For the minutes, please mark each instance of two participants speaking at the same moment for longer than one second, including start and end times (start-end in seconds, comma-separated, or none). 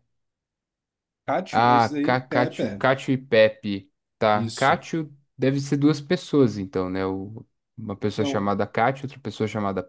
1.5-2.8